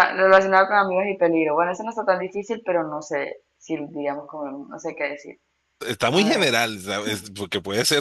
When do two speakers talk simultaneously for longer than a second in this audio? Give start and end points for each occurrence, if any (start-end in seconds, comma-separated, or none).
none